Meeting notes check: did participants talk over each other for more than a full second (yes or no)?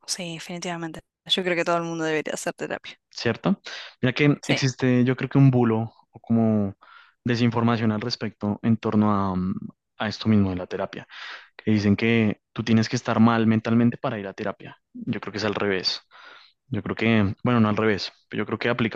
no